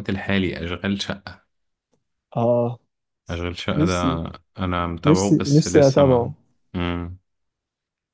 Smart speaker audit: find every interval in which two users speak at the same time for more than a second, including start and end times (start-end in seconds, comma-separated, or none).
5.0-6.3